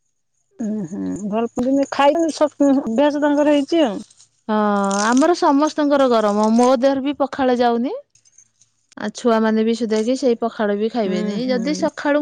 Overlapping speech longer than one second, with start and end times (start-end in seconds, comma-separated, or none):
none